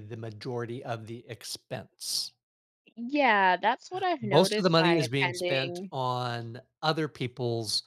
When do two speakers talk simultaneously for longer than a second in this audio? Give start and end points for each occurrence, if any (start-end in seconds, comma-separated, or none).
4.2-5.9